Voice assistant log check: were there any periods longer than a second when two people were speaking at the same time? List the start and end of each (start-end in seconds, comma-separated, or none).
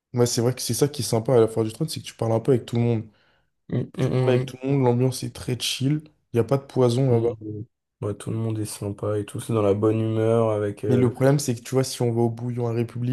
none